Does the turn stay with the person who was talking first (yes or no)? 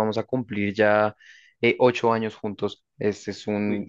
yes